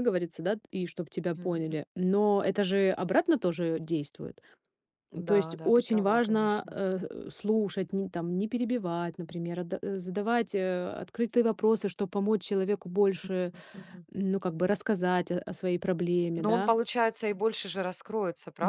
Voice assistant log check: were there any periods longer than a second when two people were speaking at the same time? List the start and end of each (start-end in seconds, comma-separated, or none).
5.3-6.8